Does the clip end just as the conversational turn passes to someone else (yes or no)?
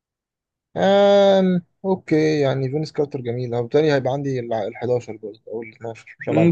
yes